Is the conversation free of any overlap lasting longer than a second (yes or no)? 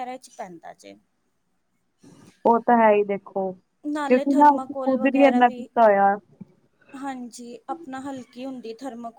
no